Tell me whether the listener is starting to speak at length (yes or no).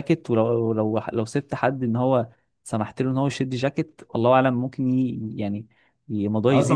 yes